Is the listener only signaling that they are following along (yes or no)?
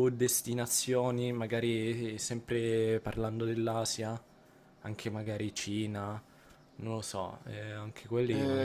no